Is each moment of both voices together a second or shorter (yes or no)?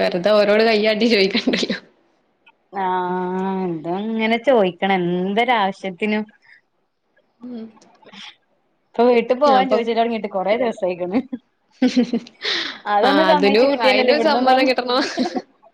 no